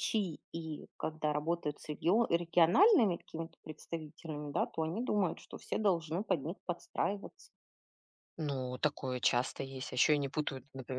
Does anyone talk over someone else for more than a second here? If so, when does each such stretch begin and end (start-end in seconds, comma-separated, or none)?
none